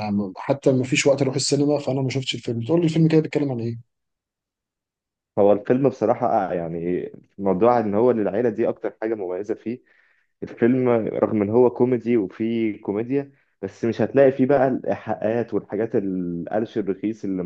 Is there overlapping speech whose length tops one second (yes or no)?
no